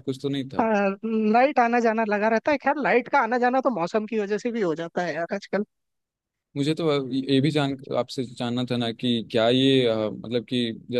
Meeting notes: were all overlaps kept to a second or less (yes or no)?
yes